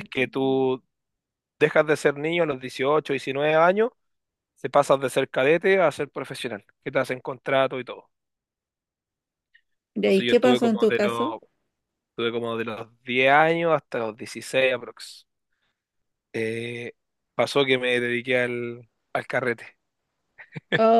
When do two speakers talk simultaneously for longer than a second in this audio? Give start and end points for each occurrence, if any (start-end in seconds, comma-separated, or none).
10.0-11.4